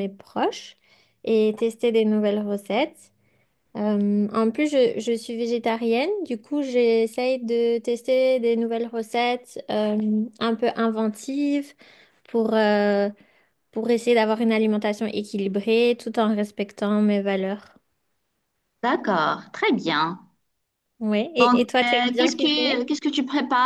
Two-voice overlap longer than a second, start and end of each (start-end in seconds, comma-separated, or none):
21.4-22.9